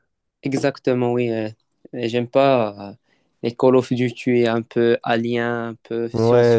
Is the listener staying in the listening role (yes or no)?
no